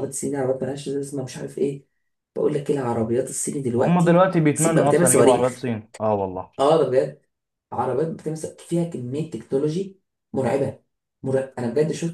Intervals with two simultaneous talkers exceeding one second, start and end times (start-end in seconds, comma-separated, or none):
3.8-5.7